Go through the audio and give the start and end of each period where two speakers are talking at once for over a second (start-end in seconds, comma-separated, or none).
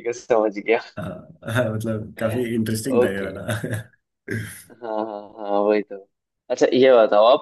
none